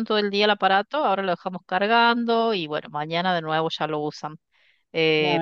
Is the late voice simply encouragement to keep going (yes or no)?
yes